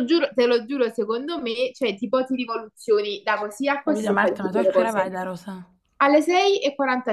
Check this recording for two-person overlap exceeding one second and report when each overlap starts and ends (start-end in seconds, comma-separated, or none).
3.8-5.2